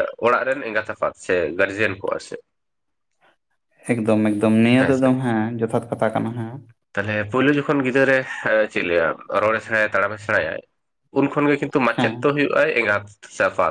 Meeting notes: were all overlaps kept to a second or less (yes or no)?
yes